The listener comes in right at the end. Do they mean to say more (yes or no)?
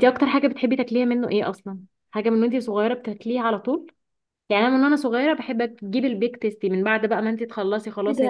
yes